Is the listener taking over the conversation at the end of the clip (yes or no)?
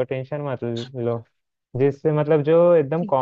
no